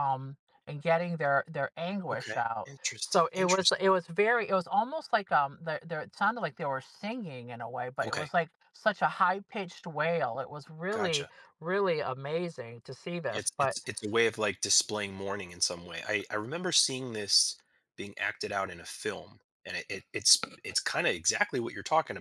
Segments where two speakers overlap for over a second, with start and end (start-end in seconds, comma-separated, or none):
2.1-3.8